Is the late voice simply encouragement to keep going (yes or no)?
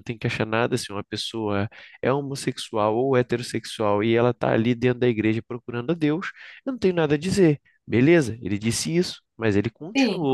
yes